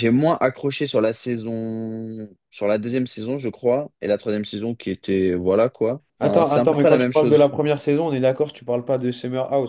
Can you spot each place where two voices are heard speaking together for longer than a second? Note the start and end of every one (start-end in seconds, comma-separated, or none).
6.2-7.5